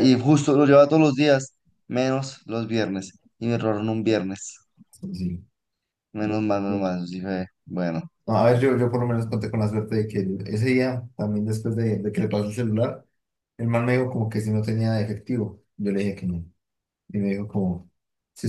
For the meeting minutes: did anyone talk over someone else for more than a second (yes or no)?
no